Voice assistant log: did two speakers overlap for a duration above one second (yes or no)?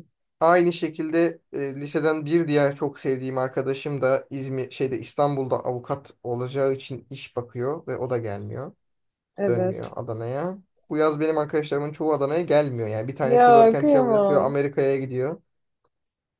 yes